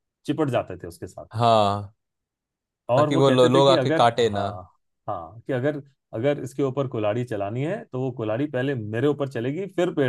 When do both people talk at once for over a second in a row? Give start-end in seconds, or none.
3.0-4.5